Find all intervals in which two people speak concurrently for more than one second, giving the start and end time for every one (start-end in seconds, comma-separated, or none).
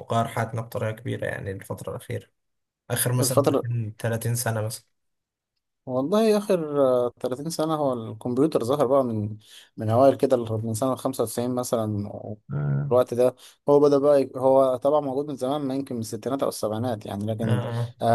none